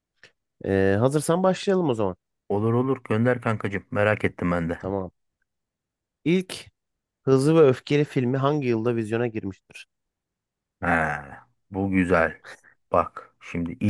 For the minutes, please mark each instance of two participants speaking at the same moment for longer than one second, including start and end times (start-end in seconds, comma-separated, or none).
none